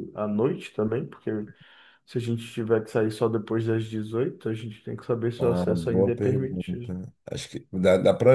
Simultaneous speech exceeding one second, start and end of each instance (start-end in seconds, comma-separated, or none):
5.4-6.9